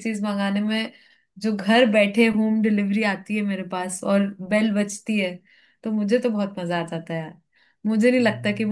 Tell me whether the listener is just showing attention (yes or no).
yes